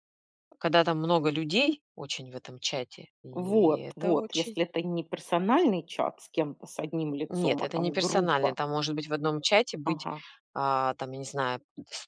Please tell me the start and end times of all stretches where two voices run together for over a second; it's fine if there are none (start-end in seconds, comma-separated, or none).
3.3-4.6, 7.3-8.6